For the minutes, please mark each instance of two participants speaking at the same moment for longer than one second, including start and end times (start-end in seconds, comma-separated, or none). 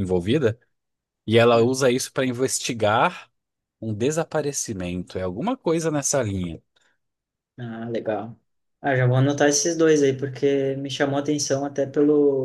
none